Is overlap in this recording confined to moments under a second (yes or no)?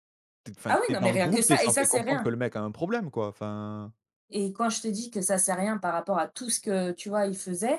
no